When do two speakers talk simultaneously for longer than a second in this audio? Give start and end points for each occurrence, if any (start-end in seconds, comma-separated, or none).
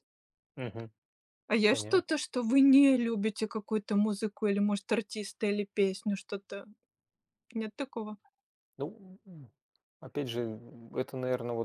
none